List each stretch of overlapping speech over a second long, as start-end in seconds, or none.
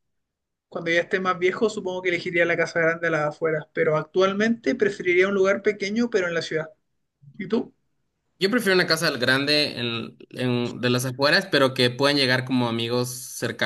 none